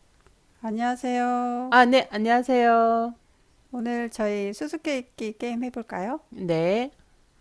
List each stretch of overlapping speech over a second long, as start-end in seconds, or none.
none